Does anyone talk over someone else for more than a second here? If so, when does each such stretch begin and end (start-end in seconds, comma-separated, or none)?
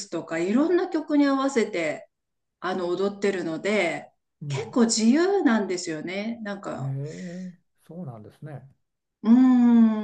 none